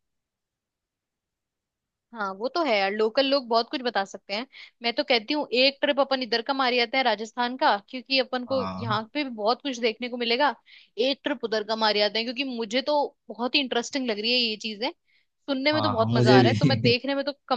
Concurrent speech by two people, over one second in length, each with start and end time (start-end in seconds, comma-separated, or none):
15.7-16.9